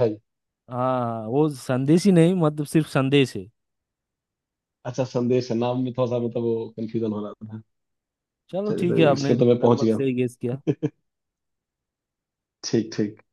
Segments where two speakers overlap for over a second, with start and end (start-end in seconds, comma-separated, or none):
8.7-10.1